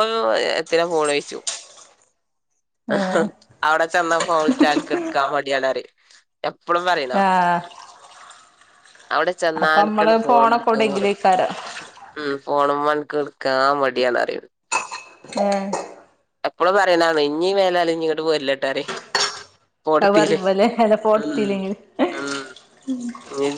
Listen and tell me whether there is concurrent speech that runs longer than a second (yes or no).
yes